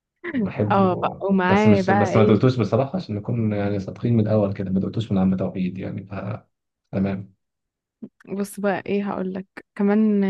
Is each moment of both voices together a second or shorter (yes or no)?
no